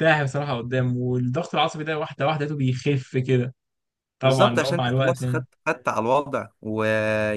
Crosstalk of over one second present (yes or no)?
yes